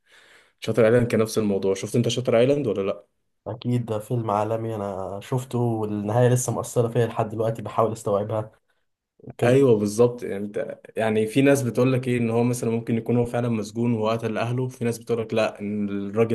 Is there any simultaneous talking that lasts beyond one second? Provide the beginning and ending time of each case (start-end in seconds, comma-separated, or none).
none